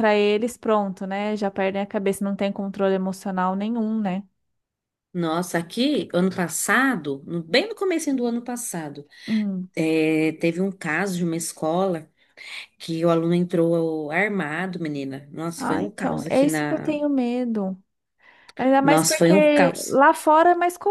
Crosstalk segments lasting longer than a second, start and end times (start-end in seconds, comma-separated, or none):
15.6-17.0, 18.8-20.0